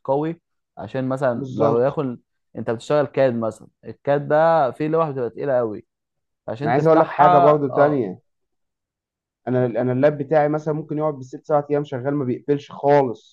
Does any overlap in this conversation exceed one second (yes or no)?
yes